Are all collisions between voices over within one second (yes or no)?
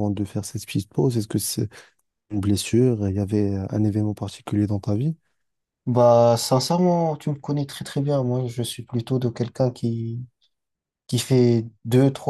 yes